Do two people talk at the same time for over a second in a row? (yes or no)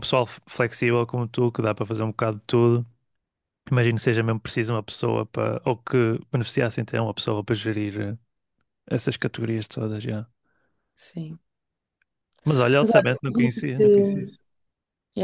yes